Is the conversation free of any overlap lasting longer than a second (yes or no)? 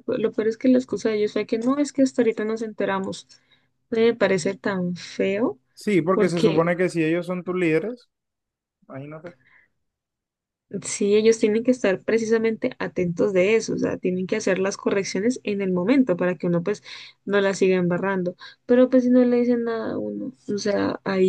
yes